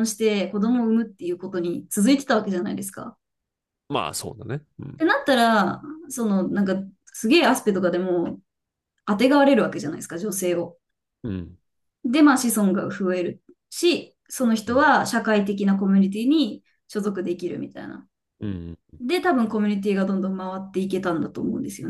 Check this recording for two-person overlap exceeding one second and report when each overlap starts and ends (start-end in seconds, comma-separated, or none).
none